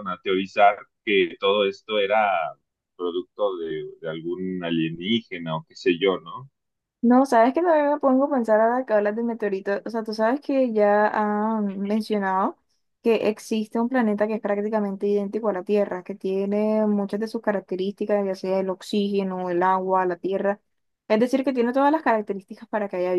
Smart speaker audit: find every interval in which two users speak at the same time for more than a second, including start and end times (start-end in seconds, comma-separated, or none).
none